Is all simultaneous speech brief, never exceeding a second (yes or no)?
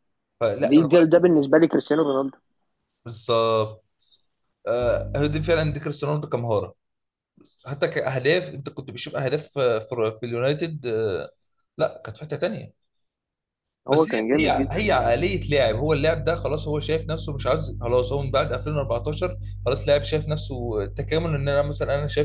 no